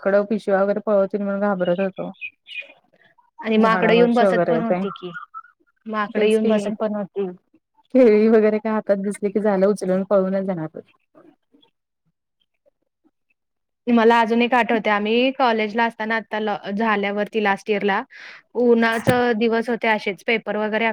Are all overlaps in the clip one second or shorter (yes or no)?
no